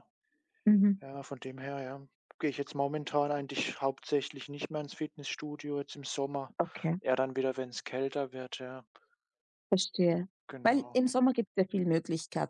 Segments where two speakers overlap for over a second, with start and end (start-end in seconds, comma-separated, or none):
none